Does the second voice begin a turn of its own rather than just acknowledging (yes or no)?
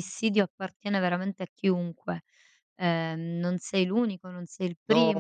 yes